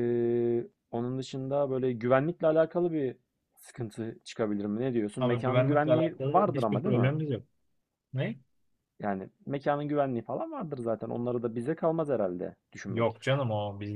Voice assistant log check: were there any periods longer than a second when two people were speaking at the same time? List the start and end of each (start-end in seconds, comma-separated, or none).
5.2-7.1